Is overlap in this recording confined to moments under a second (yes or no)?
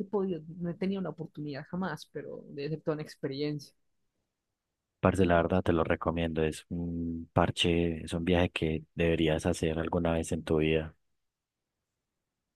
yes